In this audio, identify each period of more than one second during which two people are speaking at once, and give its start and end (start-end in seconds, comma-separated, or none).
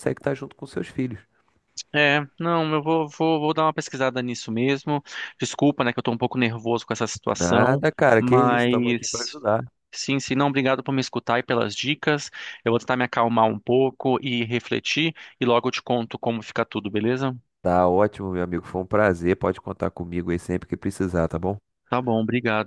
7.2-9.4